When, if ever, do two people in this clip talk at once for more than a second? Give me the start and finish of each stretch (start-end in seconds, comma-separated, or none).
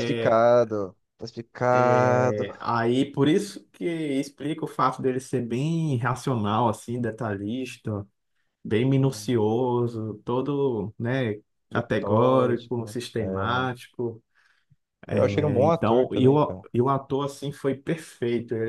11.7-13.2, 15.3-16.6